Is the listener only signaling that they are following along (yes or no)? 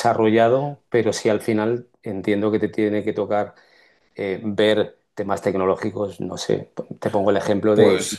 yes